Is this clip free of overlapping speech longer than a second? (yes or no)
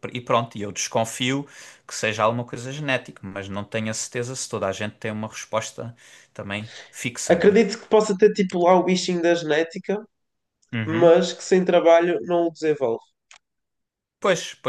yes